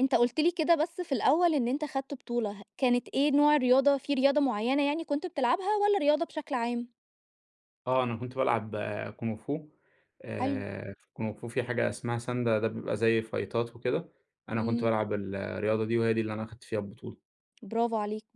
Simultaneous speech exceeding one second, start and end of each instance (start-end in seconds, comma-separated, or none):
none